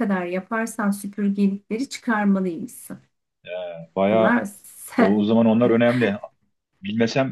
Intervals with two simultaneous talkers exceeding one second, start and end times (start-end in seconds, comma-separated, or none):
none